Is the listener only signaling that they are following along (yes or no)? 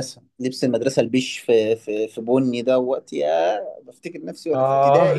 no